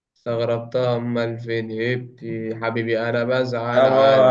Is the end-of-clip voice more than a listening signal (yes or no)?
yes